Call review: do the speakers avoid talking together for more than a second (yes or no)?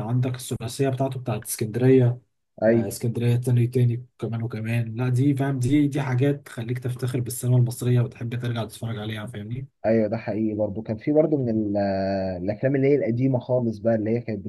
yes